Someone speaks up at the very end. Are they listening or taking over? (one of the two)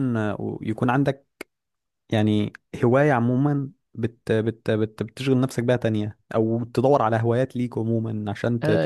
taking over